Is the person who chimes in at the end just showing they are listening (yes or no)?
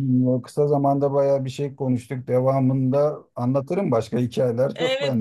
no